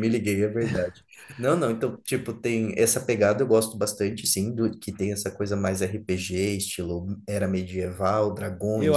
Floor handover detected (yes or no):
yes